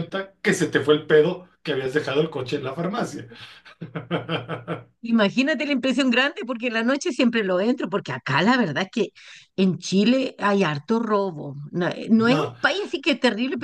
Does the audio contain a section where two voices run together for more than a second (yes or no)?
no